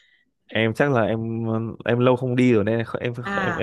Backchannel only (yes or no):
no